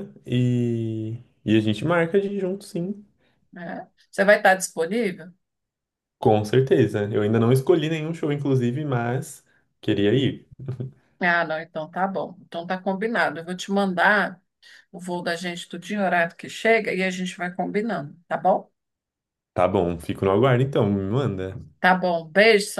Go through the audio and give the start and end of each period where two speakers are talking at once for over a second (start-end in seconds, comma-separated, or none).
none